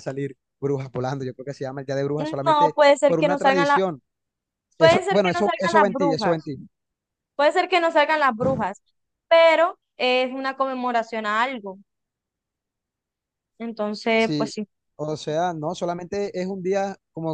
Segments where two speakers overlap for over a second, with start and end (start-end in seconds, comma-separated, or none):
2.2-3.8, 4.8-6.5